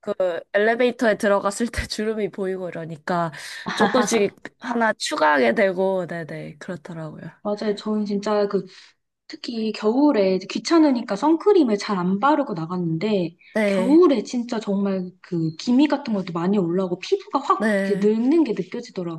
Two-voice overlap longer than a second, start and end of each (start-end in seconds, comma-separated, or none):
none